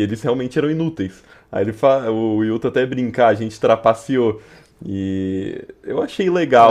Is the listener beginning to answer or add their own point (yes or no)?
yes